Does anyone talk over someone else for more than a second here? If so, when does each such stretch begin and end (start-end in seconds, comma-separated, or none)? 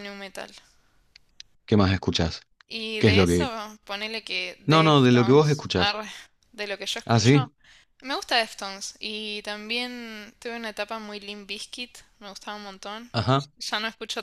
4.7-6.0